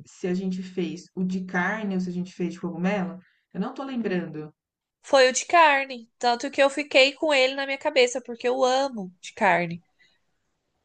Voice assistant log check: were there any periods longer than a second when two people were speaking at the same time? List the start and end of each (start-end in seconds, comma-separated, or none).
none